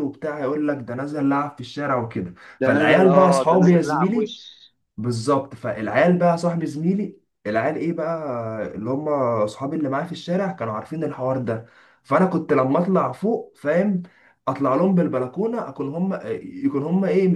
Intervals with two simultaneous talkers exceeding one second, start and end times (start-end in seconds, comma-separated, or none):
2.6-4.3